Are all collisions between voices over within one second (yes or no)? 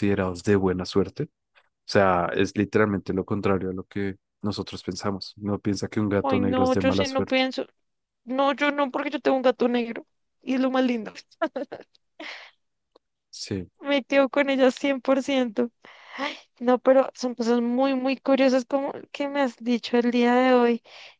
no